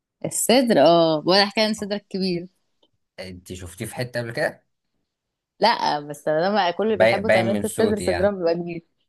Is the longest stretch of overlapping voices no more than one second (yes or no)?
no